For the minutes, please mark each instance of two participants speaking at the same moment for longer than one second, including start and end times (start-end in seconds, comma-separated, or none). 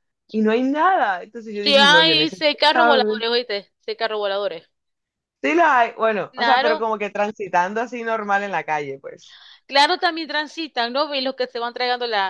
1.6-3.3